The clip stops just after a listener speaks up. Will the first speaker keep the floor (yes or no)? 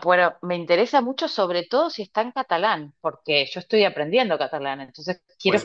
no